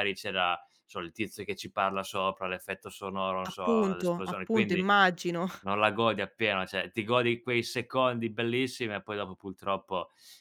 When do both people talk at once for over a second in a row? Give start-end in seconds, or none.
3.4-4.9